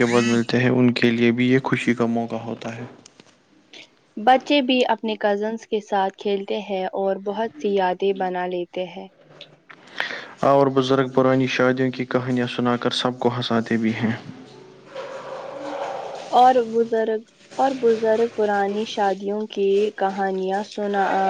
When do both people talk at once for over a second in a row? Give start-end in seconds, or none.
none